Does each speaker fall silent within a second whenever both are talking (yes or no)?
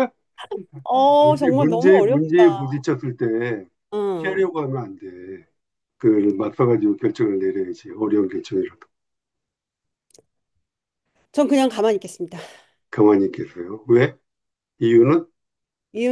no